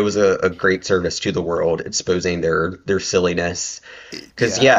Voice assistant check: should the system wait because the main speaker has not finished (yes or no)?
yes